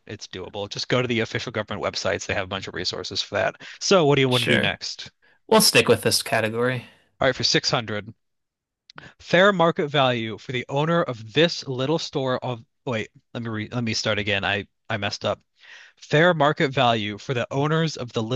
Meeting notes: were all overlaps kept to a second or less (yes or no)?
yes